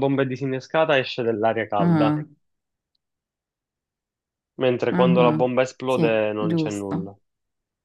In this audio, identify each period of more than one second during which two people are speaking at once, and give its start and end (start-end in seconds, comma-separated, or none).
4.9-7.1